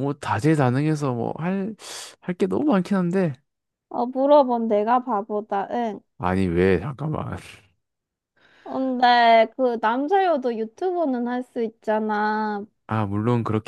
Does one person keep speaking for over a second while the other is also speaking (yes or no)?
no